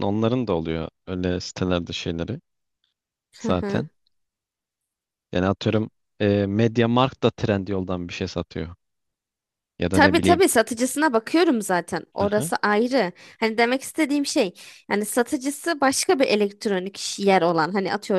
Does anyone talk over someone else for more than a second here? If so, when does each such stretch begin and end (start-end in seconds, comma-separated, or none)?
none